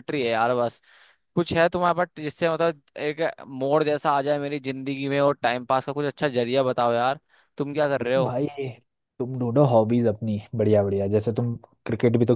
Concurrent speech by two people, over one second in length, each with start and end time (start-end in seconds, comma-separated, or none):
none